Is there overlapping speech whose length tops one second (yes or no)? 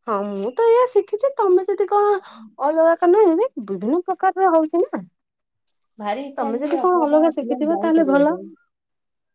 yes